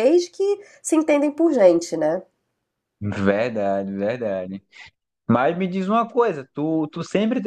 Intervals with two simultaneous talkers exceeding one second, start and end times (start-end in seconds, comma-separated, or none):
none